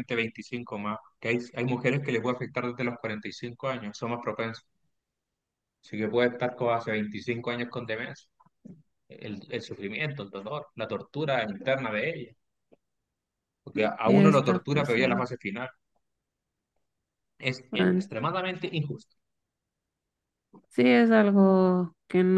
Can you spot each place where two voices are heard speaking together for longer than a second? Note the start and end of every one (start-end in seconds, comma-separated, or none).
14.0-15.3